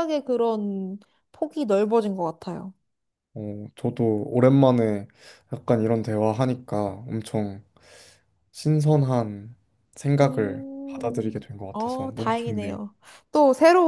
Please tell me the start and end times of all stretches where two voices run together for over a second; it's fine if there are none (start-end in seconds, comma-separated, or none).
10.2-12.8